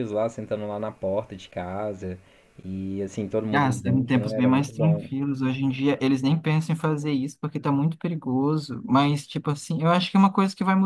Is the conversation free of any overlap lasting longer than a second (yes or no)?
no